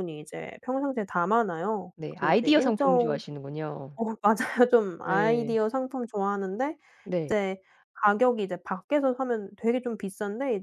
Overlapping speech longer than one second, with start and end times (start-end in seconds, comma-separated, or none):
2.0-3.2